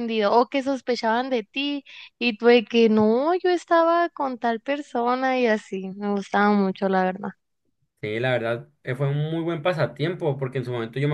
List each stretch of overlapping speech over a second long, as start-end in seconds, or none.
none